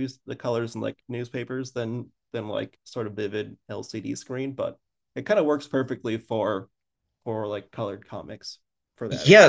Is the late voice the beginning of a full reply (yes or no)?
yes